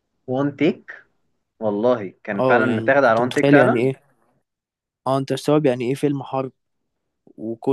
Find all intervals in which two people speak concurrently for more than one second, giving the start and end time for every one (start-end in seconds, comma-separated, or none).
2.3-3.9